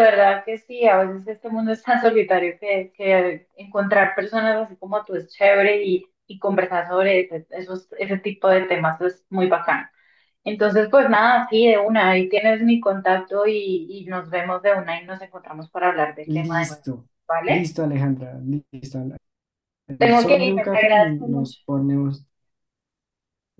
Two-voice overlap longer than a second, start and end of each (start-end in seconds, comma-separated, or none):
20.0-21.6